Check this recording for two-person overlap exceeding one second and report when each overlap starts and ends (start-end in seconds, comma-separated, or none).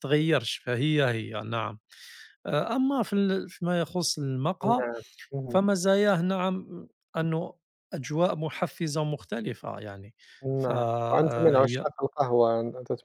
10.5-11.9